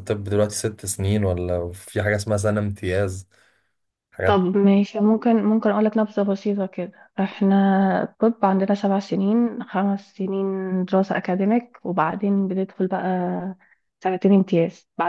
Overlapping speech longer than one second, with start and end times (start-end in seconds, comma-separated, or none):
none